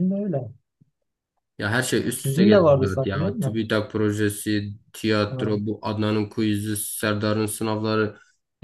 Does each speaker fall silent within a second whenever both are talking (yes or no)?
no